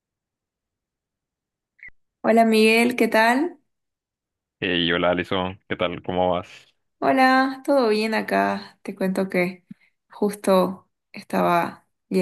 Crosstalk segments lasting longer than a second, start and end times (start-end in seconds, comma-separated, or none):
none